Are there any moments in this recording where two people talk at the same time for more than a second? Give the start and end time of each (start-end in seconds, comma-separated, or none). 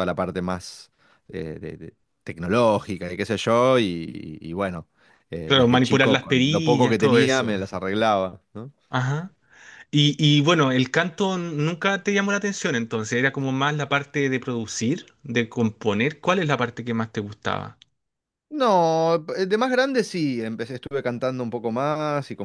5.5-7.5